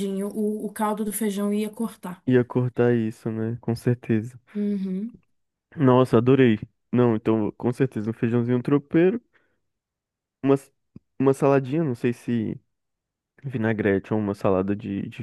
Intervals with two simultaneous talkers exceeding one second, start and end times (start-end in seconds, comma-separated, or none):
none